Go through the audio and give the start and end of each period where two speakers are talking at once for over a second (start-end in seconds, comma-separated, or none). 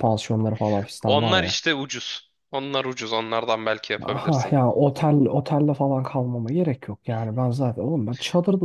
none